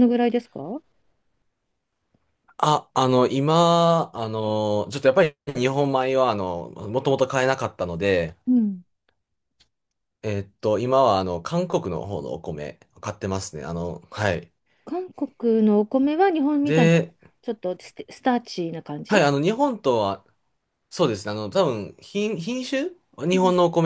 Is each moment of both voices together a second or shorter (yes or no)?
yes